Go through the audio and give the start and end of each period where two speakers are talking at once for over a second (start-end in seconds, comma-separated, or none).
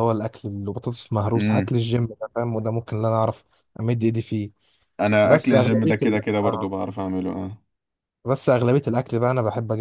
5.2-6.7